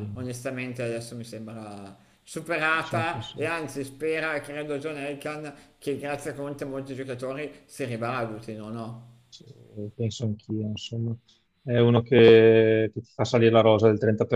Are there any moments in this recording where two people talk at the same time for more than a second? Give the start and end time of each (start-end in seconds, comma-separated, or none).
none